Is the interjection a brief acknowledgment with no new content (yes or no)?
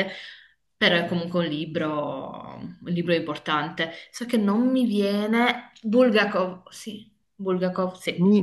no